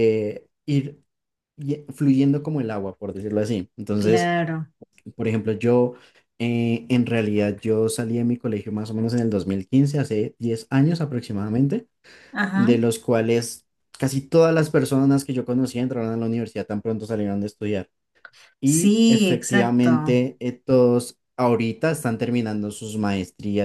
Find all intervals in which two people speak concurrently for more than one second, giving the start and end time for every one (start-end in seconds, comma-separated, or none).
18.6-19.9